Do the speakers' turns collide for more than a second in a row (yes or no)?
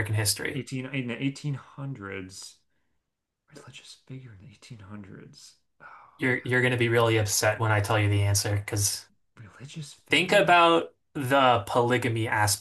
no